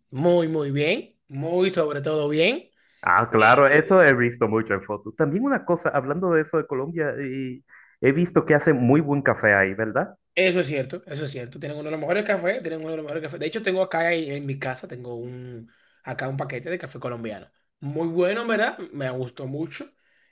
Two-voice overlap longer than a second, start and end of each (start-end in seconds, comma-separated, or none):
none